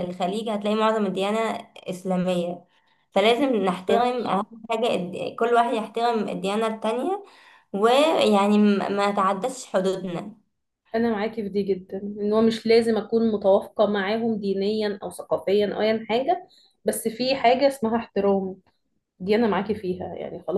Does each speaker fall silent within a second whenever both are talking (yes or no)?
yes